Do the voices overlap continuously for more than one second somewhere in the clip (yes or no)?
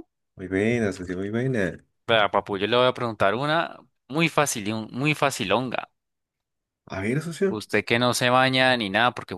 no